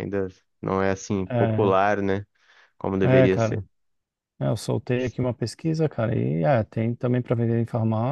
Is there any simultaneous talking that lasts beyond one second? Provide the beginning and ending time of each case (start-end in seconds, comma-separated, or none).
none